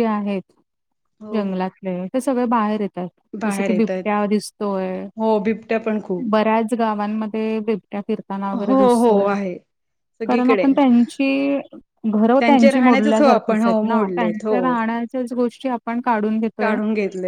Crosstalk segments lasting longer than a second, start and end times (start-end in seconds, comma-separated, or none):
12.4-14.7